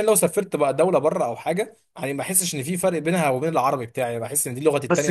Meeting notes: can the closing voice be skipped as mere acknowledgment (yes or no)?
no